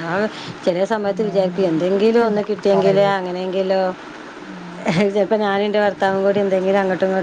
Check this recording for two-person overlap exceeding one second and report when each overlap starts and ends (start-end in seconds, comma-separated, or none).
1.3-3.2